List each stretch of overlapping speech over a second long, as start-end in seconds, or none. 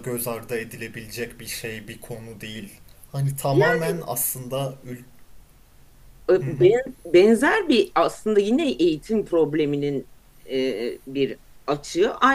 none